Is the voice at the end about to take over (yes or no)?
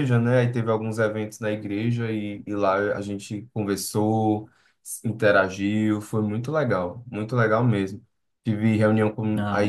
no